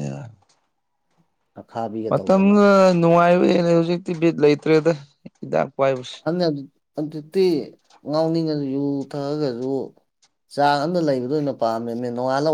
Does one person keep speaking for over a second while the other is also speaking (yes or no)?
no